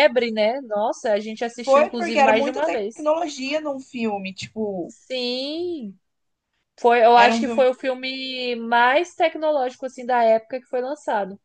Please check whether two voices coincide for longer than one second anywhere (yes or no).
yes